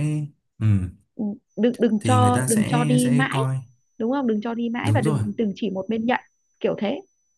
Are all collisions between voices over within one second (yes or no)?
no